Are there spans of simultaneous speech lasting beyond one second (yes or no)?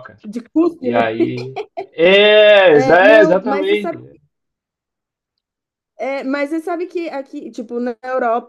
yes